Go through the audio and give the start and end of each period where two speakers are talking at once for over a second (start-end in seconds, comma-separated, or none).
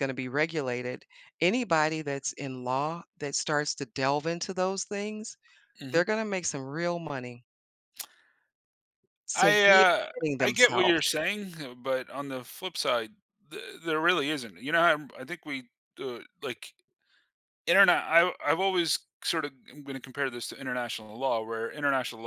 9.3-11.1